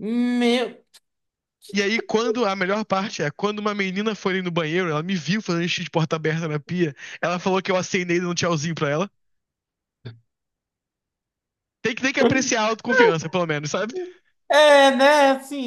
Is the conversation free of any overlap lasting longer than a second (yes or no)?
yes